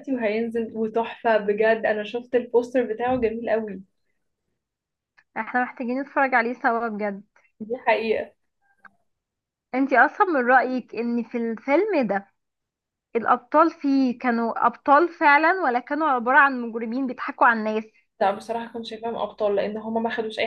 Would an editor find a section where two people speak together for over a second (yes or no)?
no